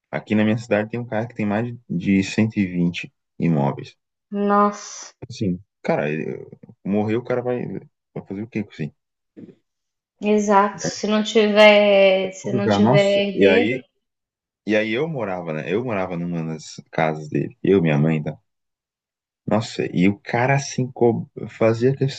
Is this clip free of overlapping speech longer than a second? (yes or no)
no